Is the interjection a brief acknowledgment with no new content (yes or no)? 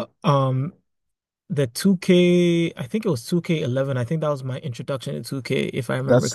no